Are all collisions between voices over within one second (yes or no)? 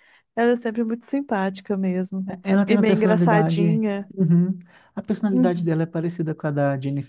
no